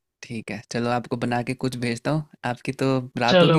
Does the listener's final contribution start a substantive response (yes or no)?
yes